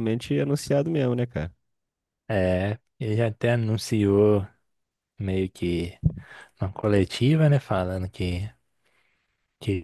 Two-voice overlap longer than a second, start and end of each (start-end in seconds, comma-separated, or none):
none